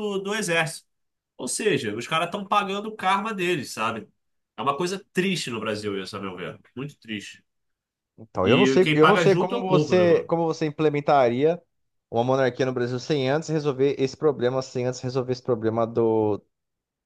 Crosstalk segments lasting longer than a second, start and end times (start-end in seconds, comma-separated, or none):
8.4-10.3